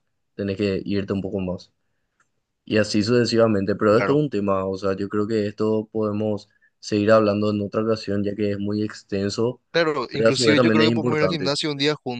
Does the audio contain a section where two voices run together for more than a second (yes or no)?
yes